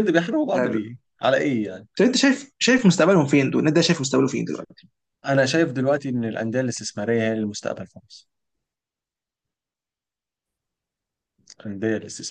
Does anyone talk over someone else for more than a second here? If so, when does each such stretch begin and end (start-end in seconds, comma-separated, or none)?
none